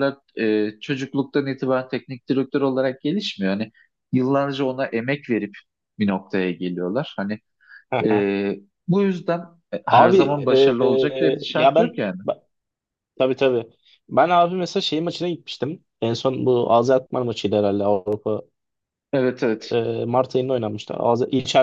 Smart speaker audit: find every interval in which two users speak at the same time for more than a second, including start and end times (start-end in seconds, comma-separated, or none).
9.9-12.2